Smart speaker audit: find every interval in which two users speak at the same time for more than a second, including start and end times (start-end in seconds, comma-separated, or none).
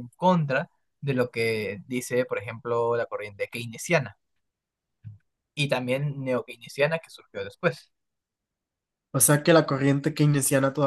none